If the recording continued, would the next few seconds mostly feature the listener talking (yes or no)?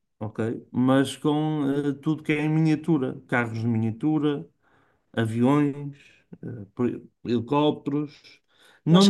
no